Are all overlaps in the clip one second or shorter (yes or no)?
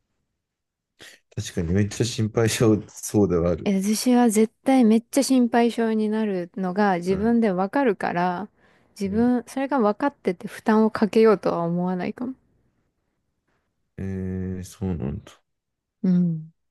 yes